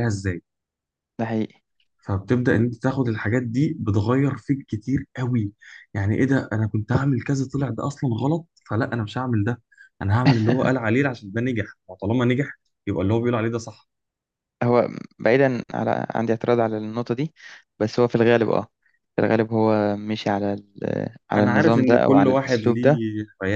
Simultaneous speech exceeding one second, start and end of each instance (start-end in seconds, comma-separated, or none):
21.4-23.0